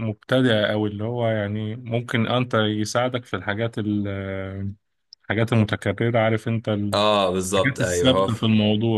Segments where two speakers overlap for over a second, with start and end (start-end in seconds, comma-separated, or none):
6.9-8.4